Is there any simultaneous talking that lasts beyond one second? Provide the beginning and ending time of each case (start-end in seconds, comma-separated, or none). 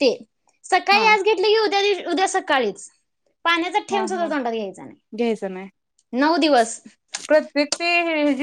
none